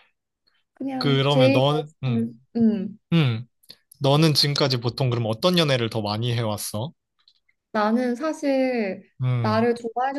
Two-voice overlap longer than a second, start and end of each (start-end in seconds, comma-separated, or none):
1.0-2.3